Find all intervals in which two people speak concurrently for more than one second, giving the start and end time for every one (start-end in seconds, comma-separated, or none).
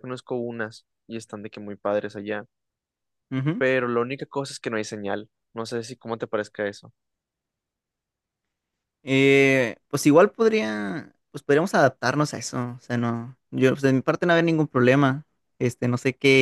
none